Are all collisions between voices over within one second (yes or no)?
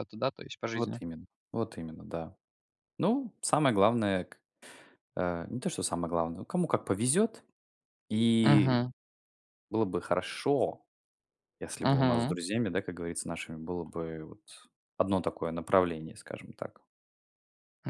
yes